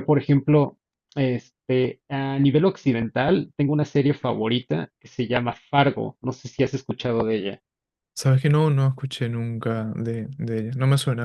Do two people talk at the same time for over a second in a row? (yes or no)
no